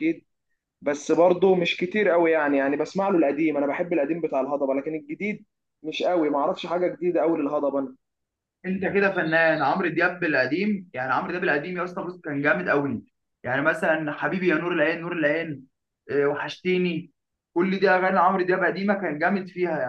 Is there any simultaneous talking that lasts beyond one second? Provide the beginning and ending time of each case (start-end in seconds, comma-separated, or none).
none